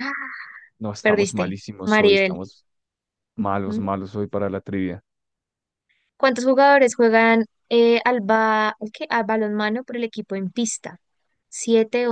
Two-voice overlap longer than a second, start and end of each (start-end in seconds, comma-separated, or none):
1.0-2.4